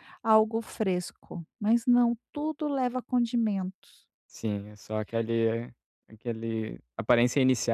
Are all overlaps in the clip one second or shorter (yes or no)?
yes